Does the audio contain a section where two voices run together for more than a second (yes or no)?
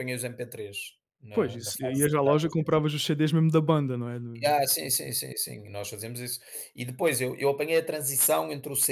yes